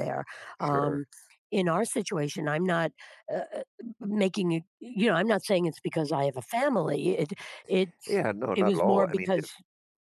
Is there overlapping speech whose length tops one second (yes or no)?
yes